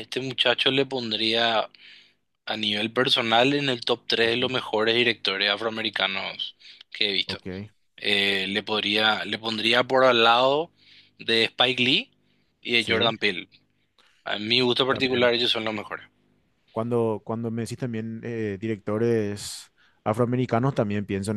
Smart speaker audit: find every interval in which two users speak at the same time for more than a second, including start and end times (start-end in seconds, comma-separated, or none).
none